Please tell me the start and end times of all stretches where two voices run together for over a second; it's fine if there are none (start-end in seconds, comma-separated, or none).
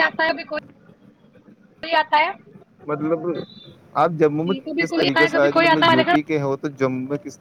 4.5-6.3